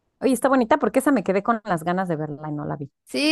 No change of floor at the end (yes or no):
no